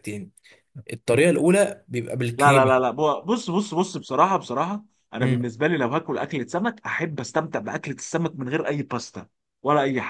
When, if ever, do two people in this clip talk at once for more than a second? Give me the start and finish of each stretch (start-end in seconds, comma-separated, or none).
none